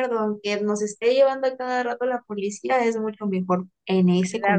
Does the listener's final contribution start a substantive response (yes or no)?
yes